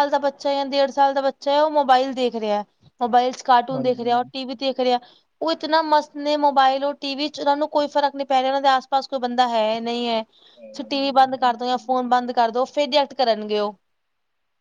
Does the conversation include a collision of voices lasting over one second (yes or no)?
yes